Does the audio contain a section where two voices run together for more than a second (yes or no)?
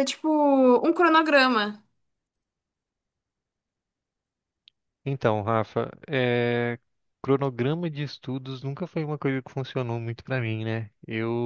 no